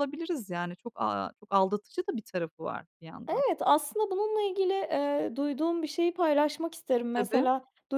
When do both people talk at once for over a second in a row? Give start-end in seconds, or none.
none